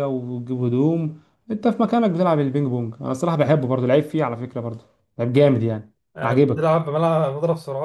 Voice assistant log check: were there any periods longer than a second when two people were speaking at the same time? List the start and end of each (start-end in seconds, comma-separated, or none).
none